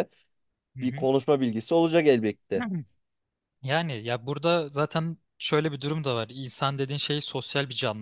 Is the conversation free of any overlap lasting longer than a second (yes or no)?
yes